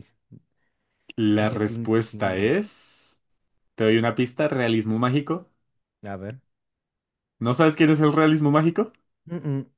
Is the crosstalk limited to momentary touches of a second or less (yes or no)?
no